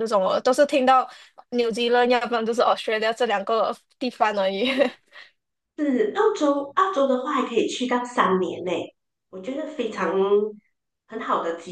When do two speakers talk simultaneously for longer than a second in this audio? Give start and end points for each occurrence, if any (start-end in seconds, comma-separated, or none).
none